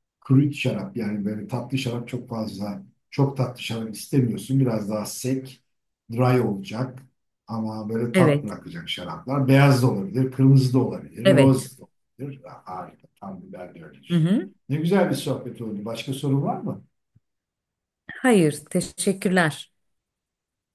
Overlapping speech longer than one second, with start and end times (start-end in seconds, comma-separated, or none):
none